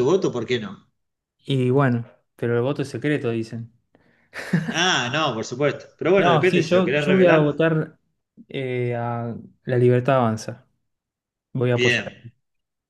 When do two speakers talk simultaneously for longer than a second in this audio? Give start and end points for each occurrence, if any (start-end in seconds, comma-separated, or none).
6.2-7.7